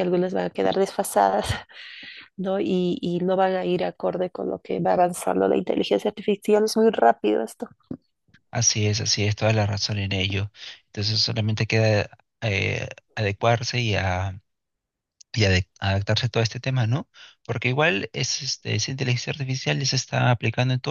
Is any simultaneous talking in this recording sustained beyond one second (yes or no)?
no